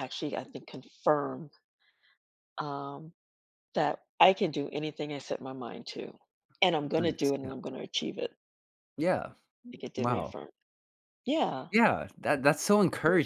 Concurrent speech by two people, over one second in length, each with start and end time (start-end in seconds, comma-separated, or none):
none